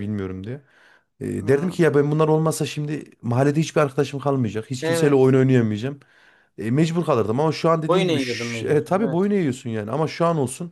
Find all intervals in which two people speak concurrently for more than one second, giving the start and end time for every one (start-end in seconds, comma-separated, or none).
7.9-9.3